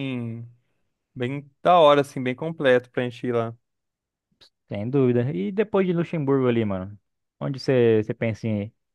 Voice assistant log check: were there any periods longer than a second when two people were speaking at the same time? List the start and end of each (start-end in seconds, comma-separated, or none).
none